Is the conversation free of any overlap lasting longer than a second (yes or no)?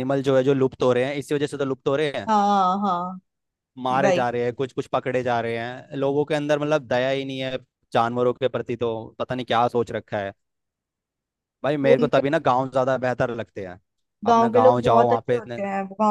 no